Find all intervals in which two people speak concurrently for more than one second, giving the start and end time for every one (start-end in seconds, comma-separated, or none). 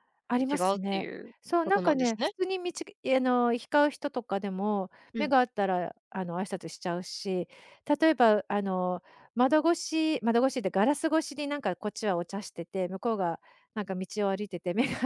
0.5-2.3